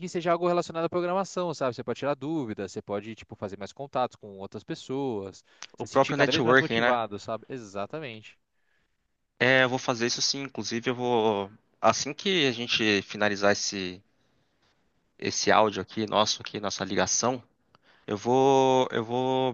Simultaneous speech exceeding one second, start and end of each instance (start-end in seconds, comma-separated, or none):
5.8-7.0